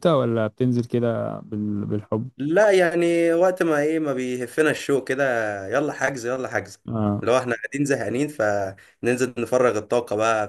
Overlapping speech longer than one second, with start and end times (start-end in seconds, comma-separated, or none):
none